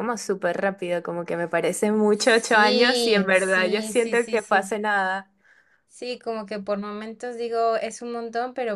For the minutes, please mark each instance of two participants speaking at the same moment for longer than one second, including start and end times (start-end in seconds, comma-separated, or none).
2.1-4.8